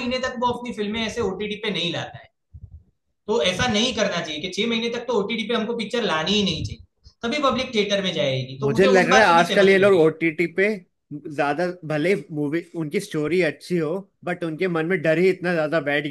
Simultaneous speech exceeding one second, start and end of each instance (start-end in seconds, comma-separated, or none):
8.6-10.1